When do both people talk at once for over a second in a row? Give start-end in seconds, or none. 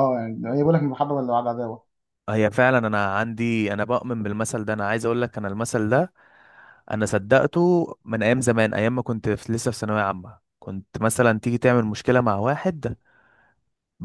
none